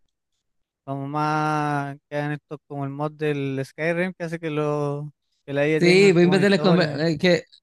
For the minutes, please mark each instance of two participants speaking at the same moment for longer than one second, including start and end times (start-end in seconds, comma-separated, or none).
5.8-7.0